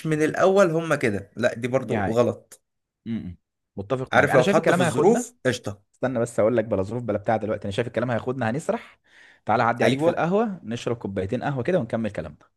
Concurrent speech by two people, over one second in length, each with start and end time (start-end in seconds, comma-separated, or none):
4.1-5.3